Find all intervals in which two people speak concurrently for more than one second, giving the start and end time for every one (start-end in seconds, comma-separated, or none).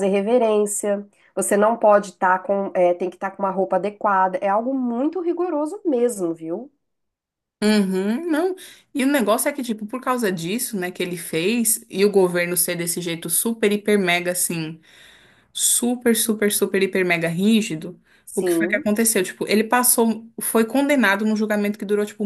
none